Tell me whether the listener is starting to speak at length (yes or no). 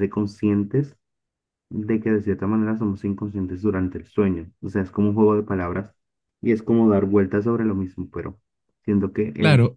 yes